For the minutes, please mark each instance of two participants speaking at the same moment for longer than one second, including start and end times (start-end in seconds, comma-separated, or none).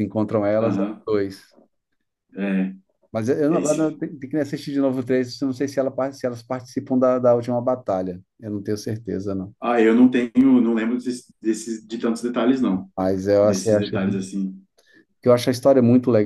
none